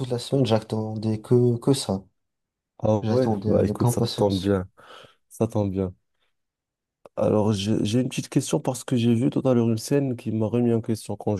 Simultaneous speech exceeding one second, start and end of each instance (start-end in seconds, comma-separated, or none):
3.0-4.6